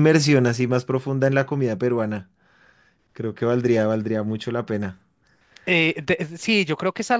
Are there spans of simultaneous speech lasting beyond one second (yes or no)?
no